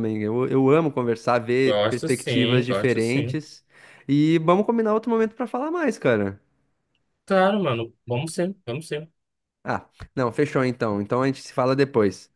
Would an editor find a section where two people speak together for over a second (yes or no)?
yes